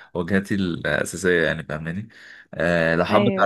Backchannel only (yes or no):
yes